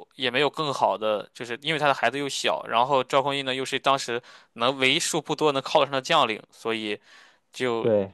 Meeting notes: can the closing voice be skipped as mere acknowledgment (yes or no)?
yes